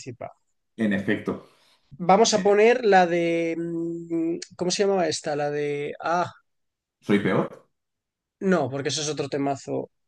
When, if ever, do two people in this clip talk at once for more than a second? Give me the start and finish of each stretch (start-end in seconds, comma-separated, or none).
none